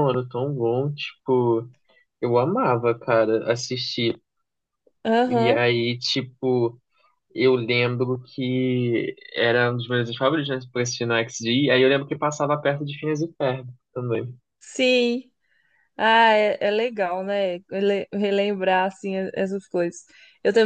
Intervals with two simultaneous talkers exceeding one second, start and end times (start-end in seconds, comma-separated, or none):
none